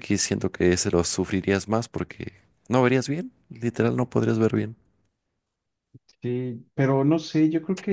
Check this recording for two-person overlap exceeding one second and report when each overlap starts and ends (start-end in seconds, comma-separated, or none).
none